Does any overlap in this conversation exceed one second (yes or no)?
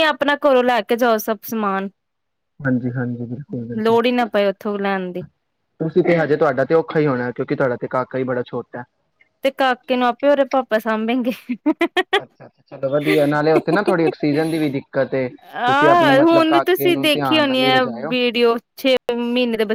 yes